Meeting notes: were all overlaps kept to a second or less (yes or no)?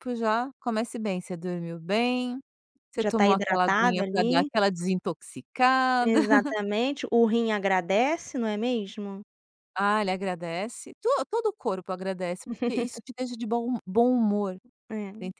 no